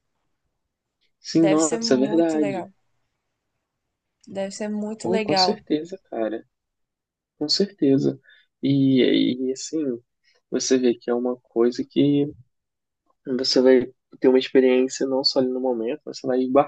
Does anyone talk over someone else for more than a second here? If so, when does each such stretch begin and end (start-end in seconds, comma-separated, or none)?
1.3-2.7